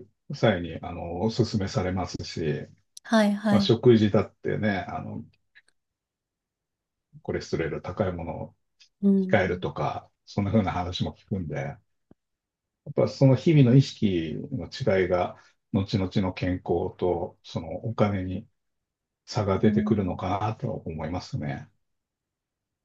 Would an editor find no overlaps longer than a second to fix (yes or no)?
yes